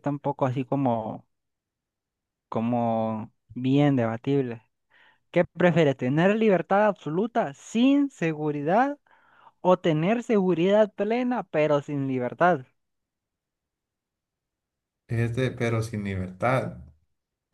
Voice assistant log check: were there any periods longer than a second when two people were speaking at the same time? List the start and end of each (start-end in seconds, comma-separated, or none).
none